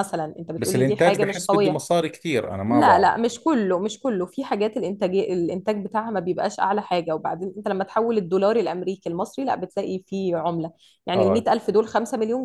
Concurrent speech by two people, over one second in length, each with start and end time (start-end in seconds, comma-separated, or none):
0.6-1.8